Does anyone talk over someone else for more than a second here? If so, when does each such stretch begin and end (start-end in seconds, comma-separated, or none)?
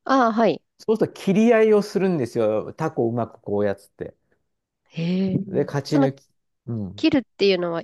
none